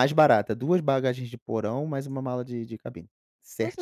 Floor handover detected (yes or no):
yes